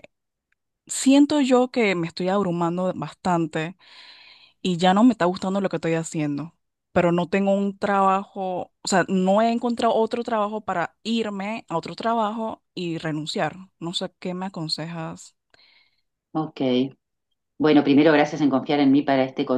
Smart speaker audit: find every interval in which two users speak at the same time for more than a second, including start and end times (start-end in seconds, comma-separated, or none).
none